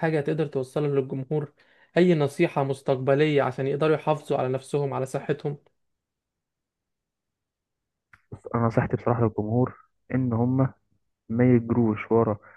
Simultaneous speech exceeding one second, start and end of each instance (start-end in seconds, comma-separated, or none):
none